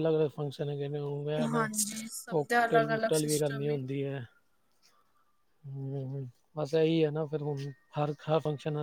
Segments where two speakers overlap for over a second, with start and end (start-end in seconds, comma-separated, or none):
2.3-3.8